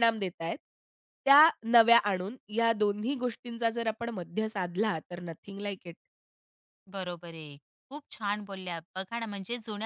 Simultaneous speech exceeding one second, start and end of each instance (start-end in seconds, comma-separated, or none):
none